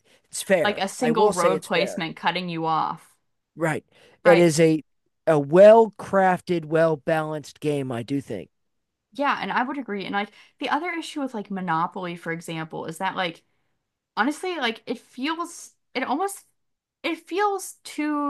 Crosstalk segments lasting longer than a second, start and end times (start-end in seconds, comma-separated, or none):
0.6-2.0